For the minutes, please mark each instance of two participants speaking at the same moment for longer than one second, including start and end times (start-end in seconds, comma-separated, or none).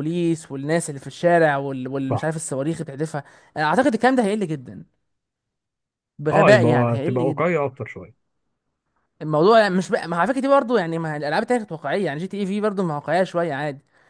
6.3-7.5